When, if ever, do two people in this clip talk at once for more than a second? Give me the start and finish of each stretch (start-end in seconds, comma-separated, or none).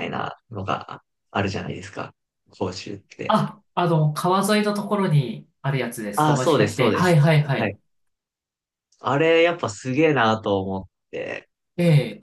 6.2-7.8